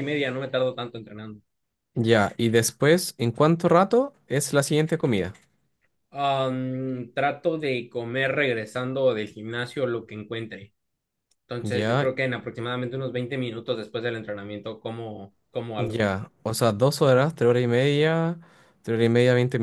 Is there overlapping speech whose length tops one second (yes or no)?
no